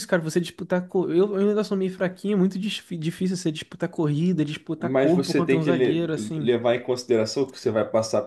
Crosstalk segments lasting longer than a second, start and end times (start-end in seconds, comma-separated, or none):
4.8-6.5